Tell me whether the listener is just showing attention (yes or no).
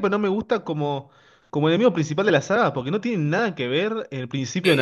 no